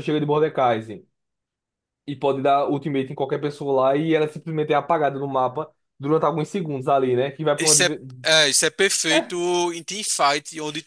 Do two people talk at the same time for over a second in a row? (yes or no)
no